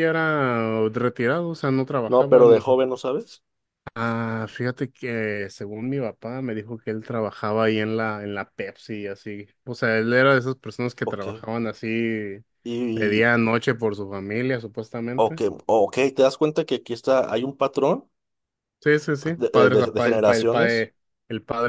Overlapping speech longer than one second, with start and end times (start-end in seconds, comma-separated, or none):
19.4-20.9